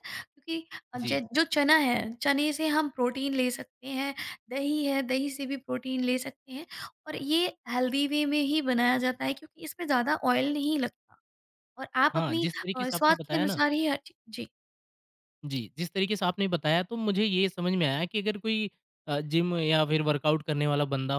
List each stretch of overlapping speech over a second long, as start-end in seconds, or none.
12.1-13.6